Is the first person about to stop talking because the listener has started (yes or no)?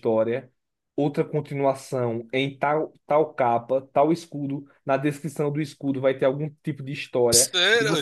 yes